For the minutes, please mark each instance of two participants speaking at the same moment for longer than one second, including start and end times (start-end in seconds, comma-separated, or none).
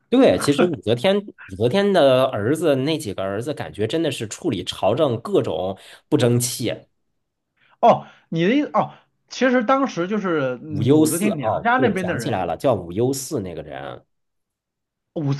10.7-12.4